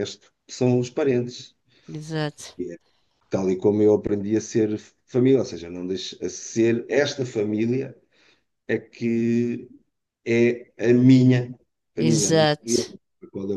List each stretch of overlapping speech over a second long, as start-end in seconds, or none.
none